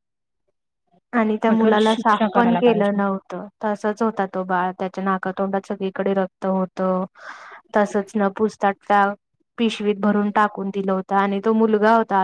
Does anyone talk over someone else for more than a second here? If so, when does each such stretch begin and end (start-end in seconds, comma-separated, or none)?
1.5-3.0